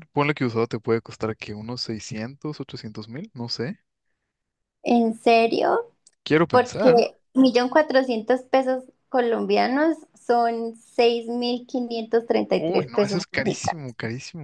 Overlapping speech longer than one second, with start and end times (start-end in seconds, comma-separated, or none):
12.6-13.8